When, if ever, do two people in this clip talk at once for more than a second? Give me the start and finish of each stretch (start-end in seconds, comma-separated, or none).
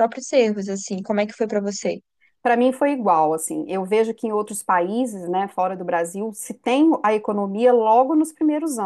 none